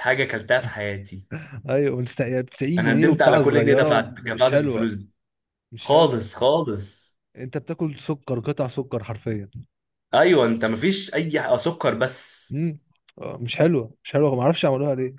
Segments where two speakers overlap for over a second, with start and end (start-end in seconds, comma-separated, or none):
2.8-4.9